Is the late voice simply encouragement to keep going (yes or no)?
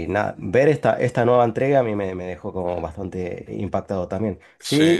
yes